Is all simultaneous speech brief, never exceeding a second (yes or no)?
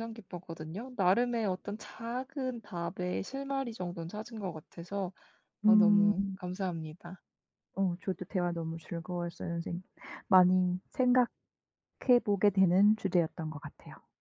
yes